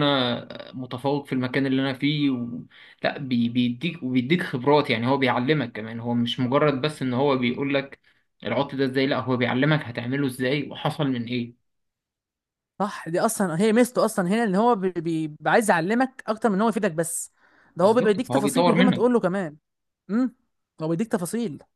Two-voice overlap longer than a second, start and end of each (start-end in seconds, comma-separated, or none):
17.8-19.2